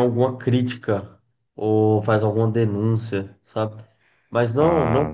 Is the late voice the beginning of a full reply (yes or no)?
no